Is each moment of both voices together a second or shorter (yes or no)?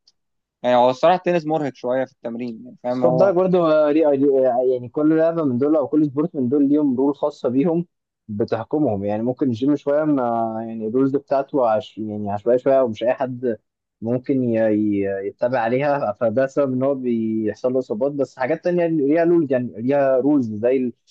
yes